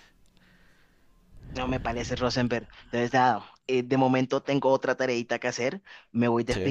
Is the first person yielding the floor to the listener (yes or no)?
no